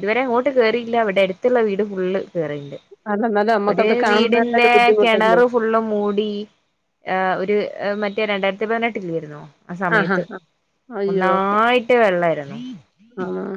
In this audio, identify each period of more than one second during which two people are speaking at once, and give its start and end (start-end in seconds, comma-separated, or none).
3.7-5.4